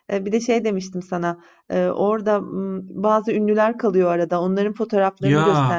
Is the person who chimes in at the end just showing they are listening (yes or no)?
yes